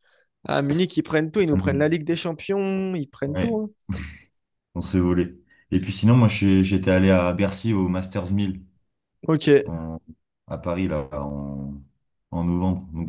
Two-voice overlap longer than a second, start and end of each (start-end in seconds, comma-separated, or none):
none